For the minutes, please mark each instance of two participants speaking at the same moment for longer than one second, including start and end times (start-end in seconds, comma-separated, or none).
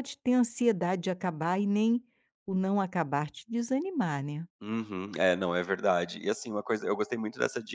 none